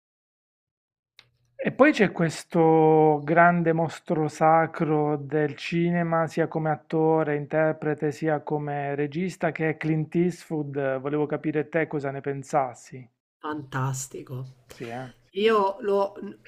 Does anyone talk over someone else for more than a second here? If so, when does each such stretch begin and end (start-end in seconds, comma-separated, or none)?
none